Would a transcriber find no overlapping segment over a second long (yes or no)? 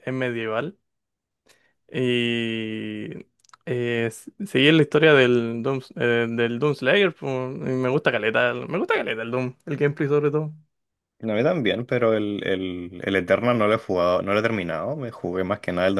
yes